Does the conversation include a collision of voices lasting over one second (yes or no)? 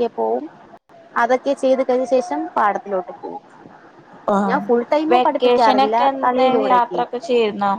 yes